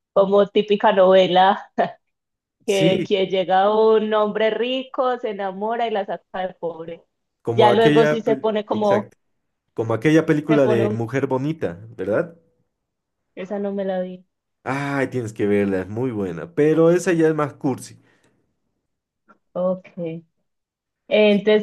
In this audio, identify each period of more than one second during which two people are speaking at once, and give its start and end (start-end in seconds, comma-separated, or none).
7.5-9.1